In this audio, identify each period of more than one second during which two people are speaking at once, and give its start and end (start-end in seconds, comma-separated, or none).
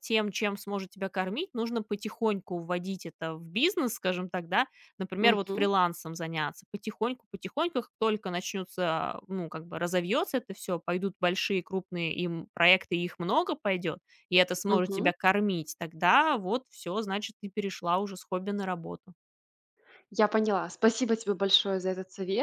none